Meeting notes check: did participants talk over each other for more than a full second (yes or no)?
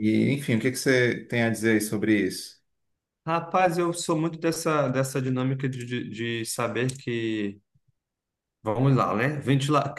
no